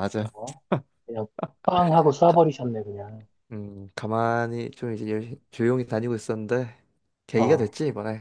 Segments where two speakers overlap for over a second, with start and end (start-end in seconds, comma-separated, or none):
none